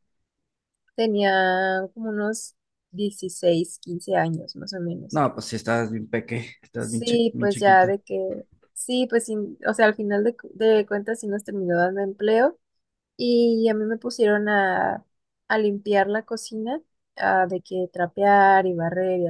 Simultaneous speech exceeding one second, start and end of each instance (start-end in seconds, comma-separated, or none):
6.8-8.0